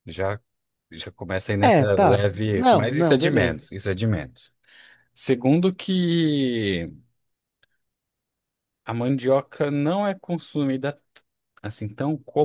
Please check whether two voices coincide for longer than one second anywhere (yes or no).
yes